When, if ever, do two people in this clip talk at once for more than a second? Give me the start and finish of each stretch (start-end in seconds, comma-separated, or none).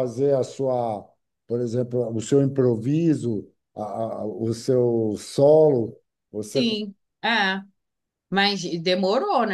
none